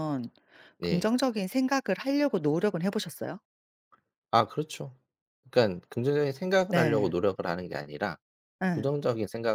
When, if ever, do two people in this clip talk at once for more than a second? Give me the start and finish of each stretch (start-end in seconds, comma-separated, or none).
none